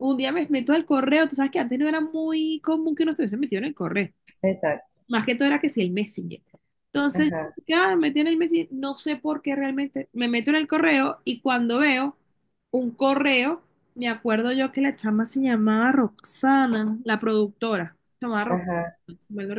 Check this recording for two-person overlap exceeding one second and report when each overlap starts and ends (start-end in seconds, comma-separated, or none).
none